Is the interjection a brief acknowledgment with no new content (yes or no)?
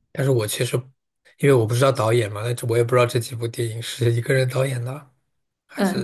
no